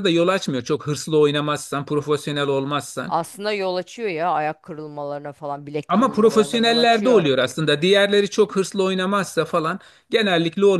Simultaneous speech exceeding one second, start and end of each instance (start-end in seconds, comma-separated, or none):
5.9-7.2